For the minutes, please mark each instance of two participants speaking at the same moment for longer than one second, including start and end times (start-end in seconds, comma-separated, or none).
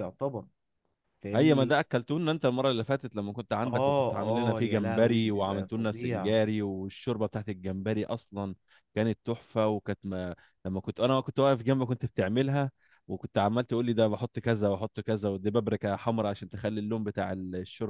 3.6-6.3